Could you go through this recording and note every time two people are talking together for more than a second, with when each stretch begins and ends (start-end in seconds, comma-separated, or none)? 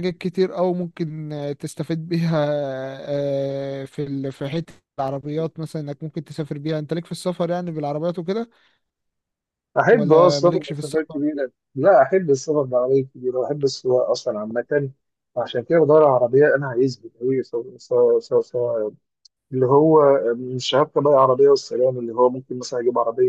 9.9-11.2